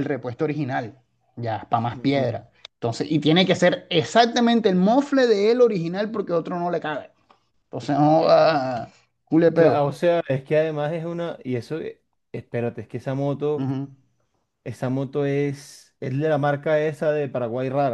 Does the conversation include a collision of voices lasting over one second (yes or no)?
no